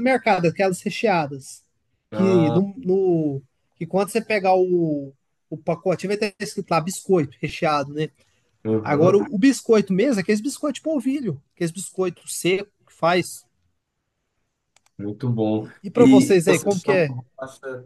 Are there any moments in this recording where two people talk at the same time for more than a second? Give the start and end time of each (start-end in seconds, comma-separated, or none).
15.6-17.1